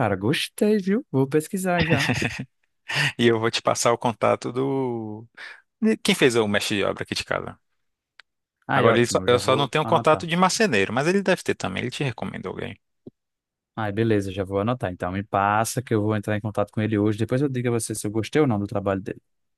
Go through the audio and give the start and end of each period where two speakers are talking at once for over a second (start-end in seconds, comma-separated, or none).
8.7-10.3